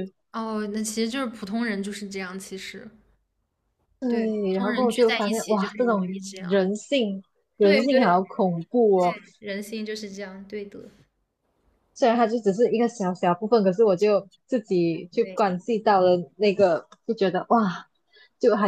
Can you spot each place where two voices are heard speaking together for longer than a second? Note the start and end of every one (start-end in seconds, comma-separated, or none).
4.1-6.6